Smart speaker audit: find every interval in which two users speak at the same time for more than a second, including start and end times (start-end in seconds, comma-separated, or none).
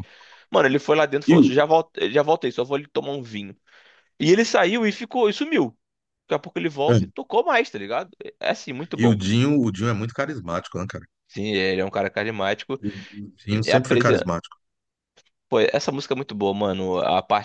none